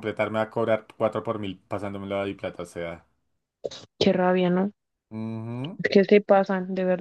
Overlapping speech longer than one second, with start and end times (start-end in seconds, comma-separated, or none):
none